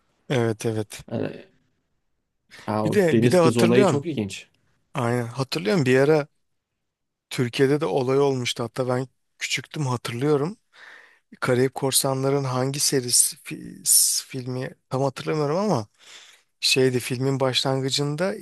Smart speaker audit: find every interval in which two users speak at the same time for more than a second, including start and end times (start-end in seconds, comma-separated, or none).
2.8-4.0